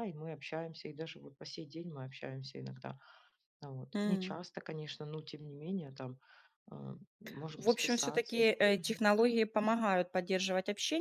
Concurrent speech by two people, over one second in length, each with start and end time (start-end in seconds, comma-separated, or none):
7.6-9.0